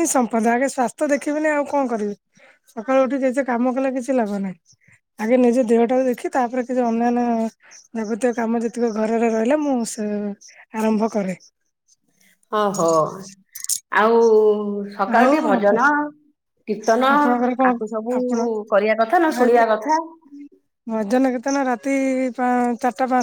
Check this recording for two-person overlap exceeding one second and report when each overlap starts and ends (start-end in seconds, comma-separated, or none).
none